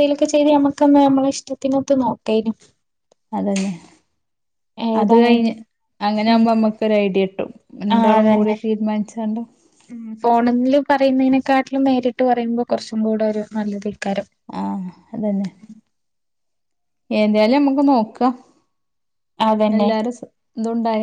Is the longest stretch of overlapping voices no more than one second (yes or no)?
yes